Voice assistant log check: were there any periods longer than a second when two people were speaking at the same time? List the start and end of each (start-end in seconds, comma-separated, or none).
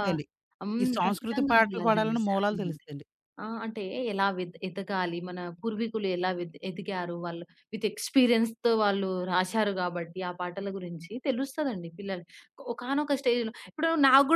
0.8-2.8